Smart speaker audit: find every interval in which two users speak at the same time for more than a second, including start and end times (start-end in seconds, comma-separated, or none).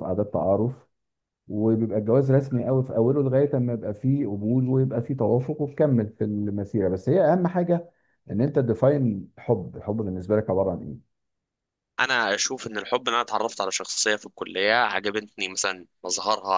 none